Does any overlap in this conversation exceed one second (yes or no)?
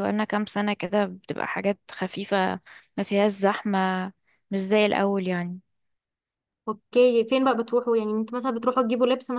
no